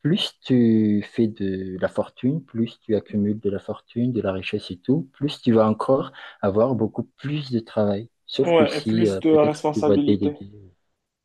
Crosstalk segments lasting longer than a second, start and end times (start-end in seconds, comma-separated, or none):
8.4-10.4